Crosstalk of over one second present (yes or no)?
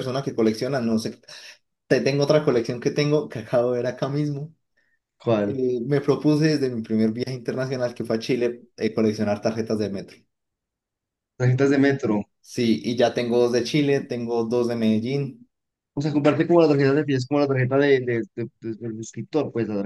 no